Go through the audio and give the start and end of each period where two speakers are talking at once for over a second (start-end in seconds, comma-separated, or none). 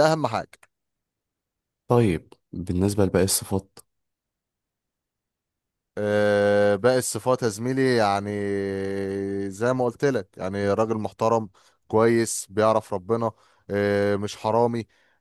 none